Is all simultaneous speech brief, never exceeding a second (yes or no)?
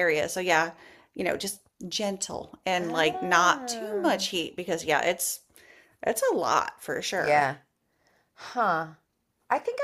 no